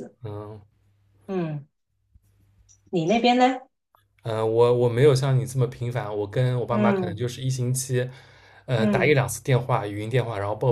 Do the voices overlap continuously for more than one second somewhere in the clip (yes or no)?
no